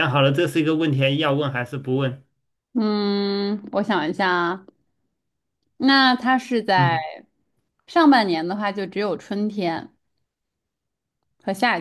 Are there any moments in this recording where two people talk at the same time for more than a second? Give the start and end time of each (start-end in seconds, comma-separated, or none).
none